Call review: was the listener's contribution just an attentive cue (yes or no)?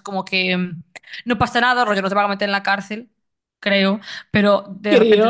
yes